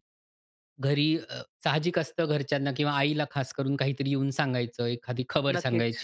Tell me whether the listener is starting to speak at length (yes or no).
no